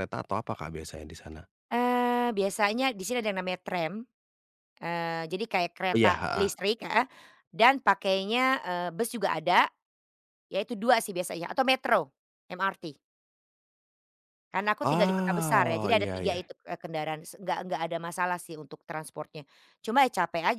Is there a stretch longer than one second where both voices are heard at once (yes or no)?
yes